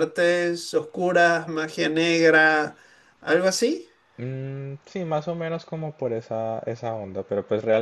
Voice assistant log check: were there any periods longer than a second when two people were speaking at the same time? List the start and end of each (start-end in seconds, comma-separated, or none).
none